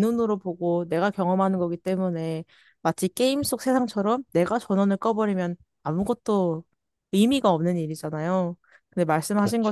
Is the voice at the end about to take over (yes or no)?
no